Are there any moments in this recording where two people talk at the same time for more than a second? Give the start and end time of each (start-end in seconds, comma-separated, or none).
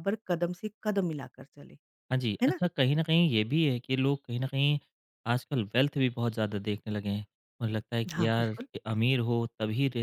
none